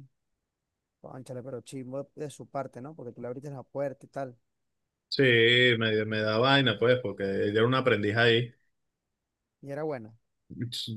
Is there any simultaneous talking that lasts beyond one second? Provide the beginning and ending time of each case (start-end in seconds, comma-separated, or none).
none